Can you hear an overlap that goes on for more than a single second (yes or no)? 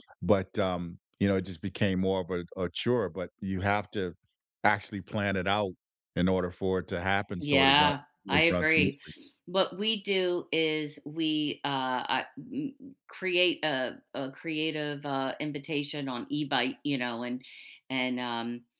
yes